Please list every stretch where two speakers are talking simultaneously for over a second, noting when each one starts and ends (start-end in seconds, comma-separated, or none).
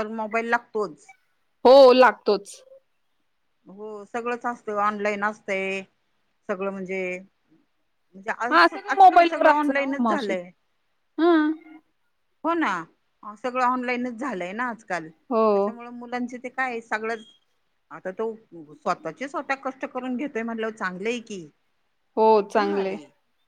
8.5-10.3